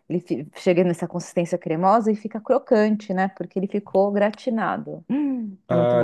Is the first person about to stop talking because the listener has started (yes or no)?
yes